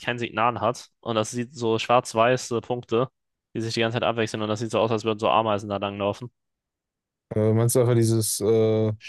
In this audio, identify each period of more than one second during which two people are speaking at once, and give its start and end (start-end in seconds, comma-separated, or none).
none